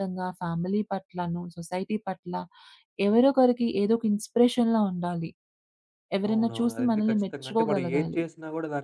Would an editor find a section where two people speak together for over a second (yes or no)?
yes